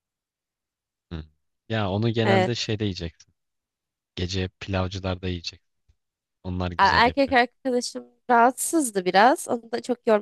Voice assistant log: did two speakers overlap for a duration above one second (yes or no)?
no